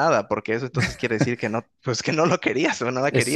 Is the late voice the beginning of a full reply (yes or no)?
yes